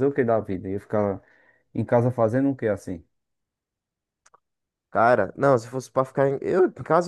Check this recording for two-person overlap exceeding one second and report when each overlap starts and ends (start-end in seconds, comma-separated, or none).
none